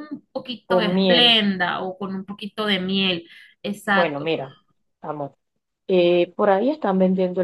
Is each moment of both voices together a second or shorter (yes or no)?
yes